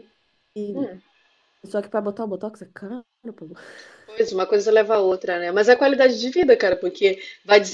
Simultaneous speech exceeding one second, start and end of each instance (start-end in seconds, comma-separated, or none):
none